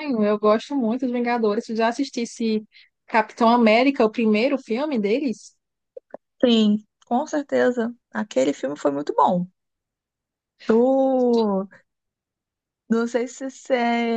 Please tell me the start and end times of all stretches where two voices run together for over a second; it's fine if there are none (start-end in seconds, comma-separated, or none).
none